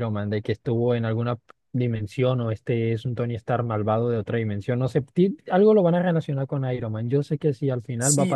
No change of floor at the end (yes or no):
no